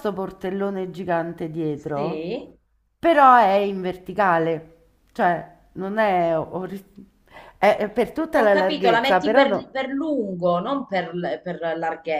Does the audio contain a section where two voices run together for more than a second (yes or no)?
yes